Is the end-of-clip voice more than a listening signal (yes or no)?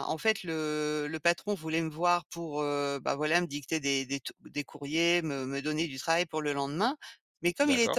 no